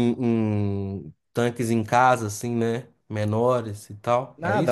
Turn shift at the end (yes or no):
yes